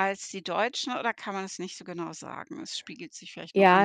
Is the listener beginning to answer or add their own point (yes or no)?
yes